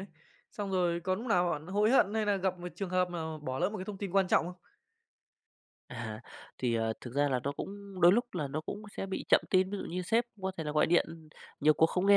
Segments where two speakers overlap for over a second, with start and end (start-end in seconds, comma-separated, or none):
none